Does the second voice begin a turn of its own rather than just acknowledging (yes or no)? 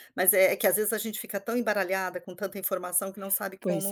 no